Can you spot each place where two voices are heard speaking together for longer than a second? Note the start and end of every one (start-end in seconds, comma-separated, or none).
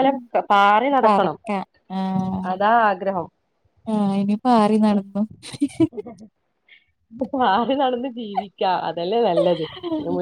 none